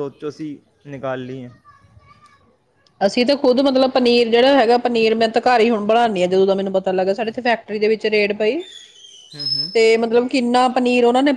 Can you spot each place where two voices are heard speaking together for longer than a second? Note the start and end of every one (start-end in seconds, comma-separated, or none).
none